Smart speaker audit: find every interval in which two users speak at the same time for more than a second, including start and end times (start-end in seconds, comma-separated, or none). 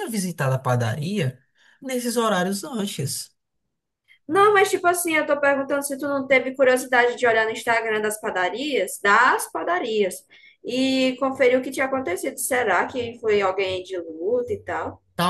none